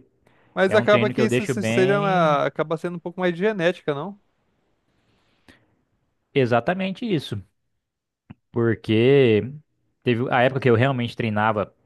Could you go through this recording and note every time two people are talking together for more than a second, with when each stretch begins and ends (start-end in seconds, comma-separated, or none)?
0.7-2.4